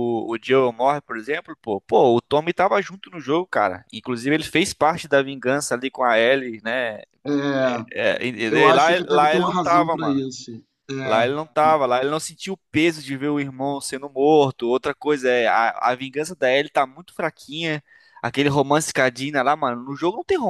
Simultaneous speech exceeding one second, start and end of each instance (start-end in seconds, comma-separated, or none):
8.5-10.2